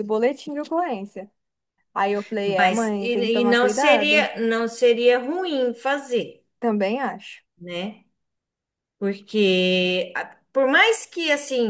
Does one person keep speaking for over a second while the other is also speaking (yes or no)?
yes